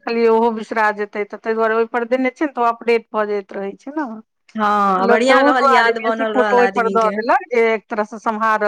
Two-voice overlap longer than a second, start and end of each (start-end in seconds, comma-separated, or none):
4.6-7.1